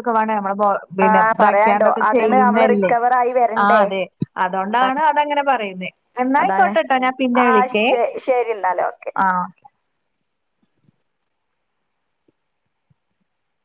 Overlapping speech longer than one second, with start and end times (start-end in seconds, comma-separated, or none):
1.1-2.9